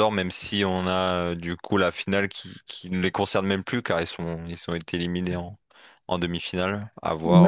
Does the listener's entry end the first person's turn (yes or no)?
yes